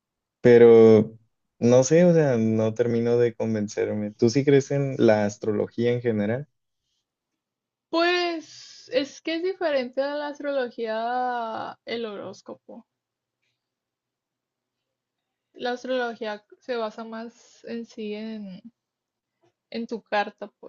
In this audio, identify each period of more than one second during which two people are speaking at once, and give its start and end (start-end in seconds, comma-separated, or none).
none